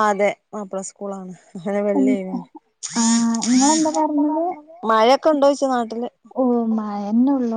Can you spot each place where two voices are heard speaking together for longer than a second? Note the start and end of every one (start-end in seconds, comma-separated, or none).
none